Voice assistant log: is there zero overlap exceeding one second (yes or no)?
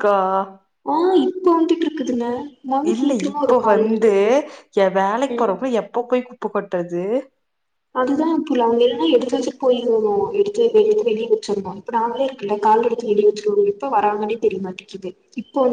yes